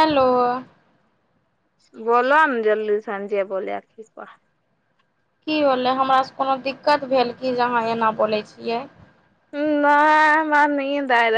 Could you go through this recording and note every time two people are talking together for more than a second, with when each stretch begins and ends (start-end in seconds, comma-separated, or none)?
none